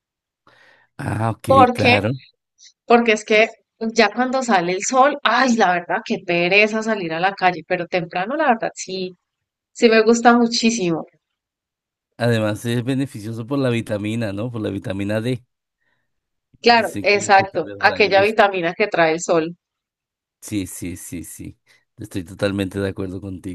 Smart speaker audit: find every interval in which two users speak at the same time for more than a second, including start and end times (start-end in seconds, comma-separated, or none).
16.7-18.4